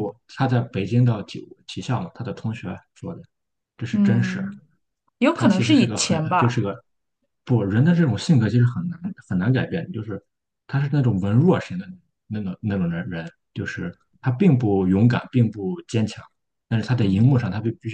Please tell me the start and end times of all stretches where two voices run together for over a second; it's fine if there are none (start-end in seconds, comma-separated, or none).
5.3-6.5